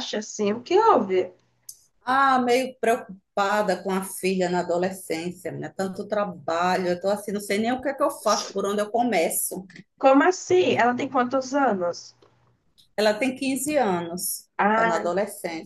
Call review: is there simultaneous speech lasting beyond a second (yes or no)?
no